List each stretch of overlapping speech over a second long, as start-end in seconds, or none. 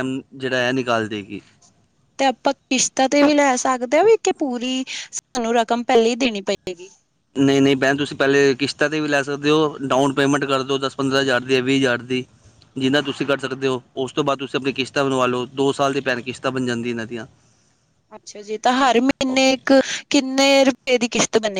none